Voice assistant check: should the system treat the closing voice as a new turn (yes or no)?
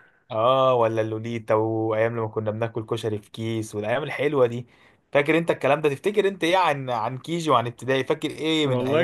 yes